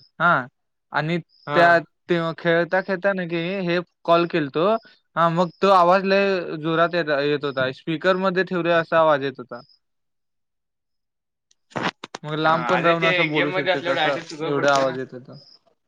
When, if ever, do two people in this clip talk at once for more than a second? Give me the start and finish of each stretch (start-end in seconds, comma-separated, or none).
12.8-14.9